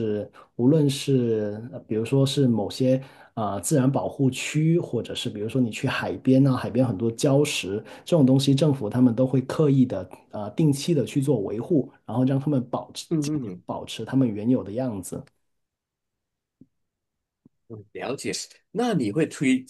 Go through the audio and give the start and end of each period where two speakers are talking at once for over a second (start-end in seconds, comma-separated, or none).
none